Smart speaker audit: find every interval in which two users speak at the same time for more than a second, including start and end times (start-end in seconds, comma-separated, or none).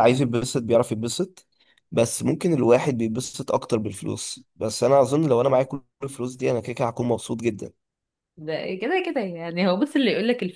none